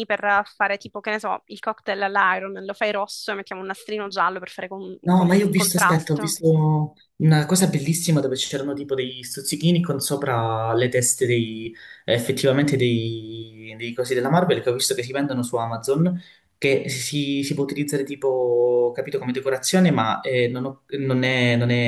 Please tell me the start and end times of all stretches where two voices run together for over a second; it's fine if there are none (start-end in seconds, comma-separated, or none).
5.0-6.4